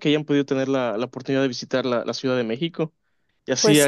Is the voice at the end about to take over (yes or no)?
no